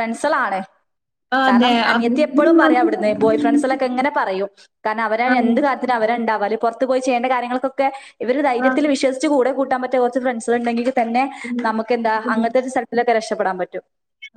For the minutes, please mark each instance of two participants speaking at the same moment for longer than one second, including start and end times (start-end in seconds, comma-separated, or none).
1.5-3.0